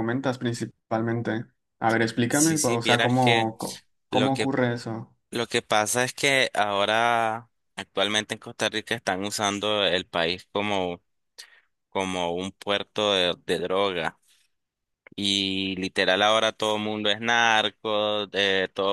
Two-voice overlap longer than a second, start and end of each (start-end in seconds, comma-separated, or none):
2.3-3.5